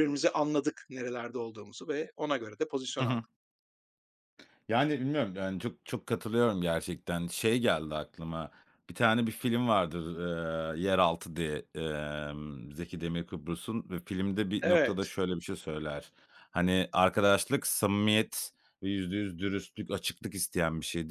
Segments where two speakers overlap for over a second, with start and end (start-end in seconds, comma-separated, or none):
none